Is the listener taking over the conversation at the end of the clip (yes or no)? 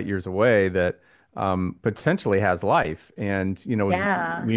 no